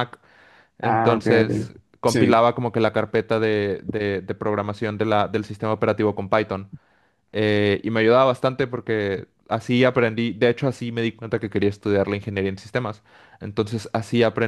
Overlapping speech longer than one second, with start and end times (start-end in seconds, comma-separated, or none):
0.8-2.4